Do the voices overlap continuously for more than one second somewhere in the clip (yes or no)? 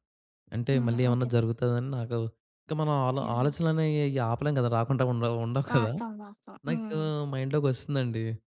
no